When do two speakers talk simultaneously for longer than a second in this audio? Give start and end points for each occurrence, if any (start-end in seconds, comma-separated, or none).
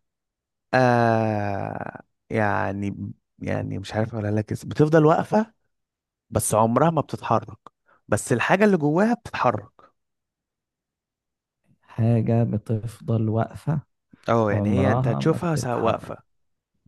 14.5-16.1